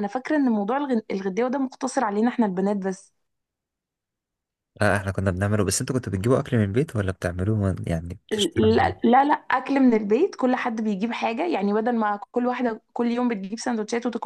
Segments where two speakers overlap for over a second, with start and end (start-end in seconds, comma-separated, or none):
none